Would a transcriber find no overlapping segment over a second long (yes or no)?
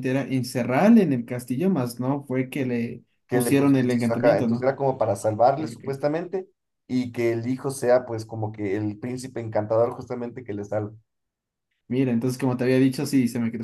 no